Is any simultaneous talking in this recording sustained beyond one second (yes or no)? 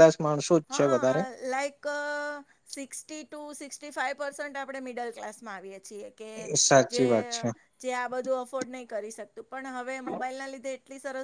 no